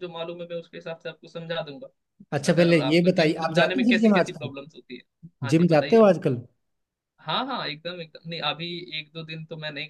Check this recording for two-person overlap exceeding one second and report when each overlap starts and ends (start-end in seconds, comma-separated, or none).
2.5-4.5